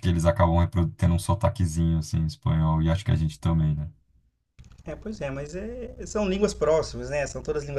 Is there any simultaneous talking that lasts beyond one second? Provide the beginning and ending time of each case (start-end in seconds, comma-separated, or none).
none